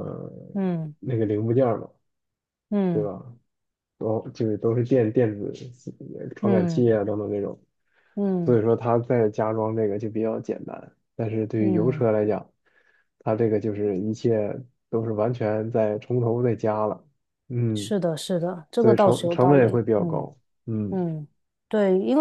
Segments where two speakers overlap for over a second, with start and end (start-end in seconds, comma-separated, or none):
18.8-20.3